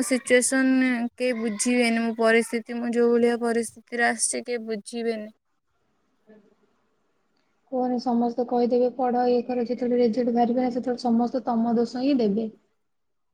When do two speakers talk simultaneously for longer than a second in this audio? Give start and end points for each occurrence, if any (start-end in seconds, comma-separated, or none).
none